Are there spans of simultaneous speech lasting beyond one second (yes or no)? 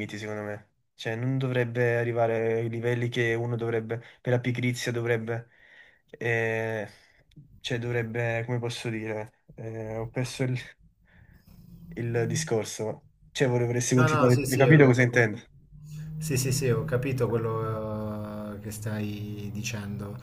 yes